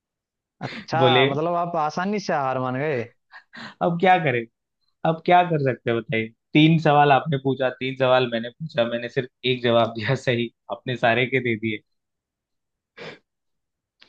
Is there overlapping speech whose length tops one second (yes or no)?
no